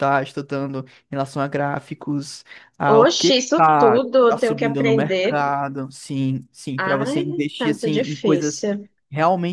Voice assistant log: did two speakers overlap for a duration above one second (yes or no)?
yes